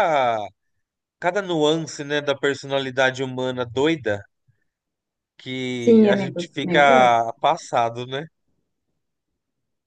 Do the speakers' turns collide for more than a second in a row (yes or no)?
yes